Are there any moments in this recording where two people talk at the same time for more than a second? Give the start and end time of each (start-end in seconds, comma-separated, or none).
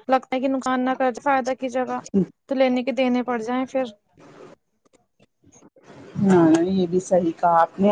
none